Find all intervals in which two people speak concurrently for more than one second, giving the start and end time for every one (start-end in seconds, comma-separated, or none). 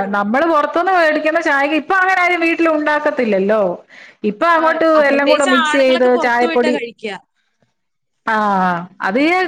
4.6-6.7